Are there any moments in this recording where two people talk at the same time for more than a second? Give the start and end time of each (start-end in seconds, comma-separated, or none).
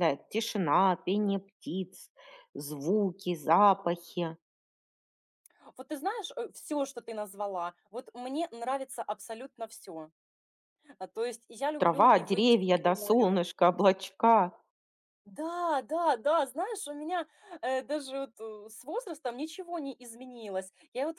11.8-13.4